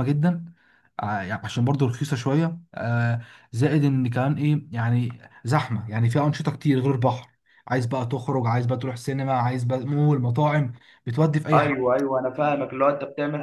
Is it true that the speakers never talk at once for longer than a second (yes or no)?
yes